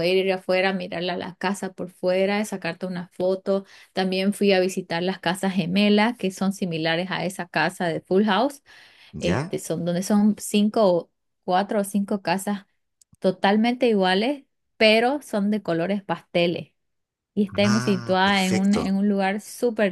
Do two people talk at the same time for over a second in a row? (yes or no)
yes